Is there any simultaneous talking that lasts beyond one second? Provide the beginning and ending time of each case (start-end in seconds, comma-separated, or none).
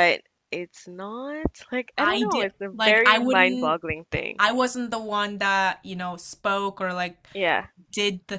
2.0-3.8